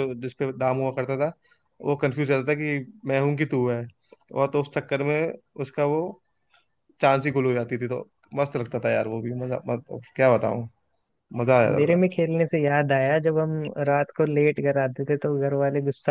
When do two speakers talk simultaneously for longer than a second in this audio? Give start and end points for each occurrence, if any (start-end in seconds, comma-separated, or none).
none